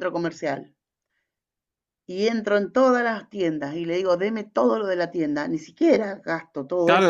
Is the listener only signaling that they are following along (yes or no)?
no